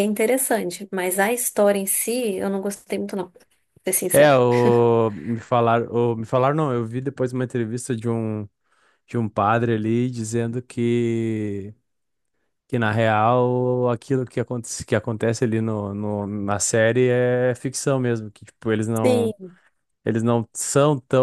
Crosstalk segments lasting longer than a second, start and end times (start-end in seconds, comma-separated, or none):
none